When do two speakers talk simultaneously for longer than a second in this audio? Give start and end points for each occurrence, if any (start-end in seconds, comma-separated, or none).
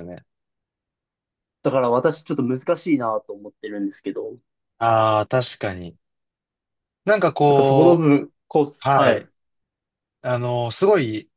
none